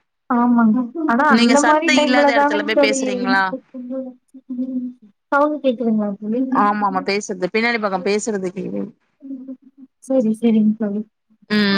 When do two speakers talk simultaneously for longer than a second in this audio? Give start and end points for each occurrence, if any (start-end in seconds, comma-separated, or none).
1.3-3.0